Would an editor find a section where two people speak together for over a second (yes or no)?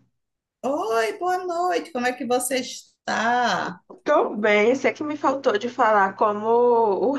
no